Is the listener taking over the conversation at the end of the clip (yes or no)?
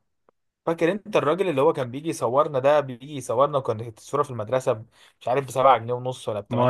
yes